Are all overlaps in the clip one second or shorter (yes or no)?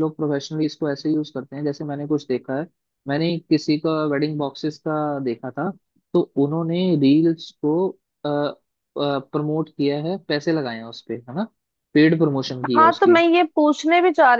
yes